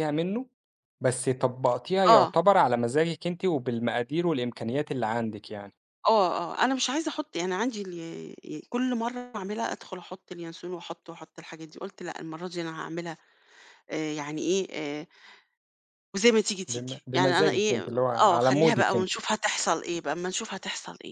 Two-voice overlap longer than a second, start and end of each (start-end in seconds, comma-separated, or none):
16.7-19.1